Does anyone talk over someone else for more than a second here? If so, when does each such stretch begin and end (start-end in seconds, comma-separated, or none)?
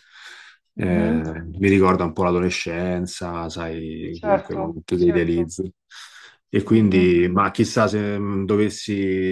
4.1-5.5